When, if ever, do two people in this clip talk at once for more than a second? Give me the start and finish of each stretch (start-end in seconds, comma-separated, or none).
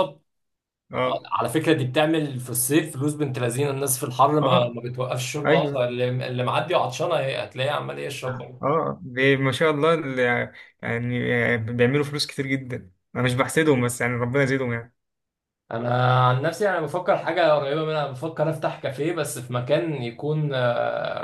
none